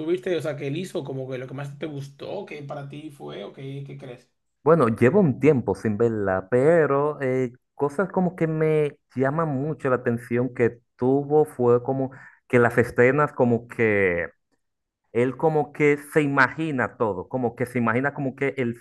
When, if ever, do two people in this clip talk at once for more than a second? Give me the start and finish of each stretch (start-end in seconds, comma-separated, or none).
none